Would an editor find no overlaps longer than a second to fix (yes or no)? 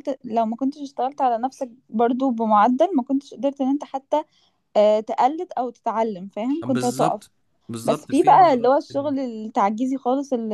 no